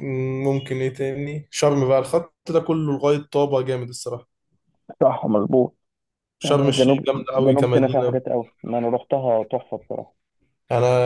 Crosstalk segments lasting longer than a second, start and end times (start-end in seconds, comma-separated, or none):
6.4-8.2